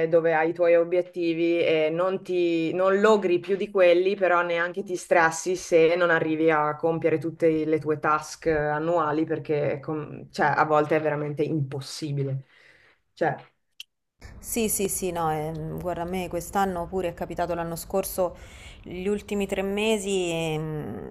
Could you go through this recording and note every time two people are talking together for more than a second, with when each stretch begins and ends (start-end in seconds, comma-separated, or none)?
none